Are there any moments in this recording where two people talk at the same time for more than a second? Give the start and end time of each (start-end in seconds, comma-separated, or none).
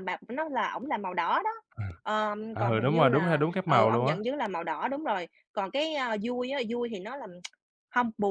2.5-4.2